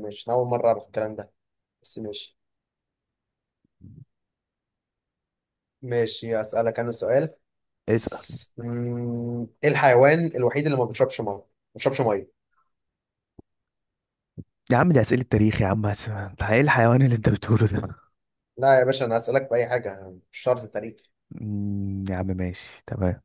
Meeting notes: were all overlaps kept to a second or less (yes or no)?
yes